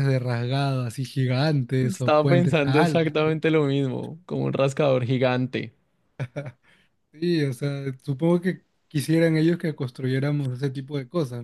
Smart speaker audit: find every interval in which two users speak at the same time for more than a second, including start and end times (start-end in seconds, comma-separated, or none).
1.8-3.2